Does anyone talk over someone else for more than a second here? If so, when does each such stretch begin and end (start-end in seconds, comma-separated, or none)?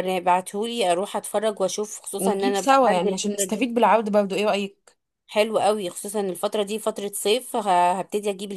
2.2-3.7